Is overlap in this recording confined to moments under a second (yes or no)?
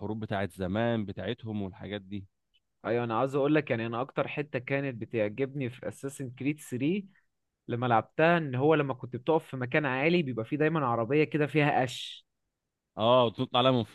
yes